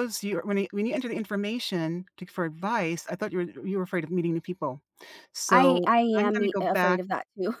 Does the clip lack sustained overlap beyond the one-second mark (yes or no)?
no